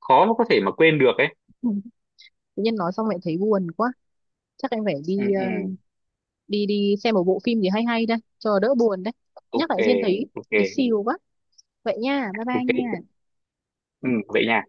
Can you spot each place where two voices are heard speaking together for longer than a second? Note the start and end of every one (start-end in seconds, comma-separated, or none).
none